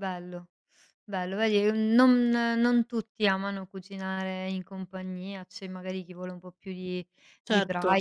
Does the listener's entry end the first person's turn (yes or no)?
no